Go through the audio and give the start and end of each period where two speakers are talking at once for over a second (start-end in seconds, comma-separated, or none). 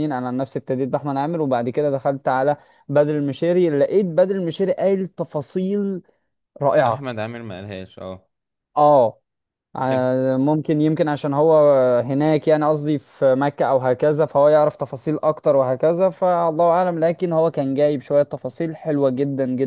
none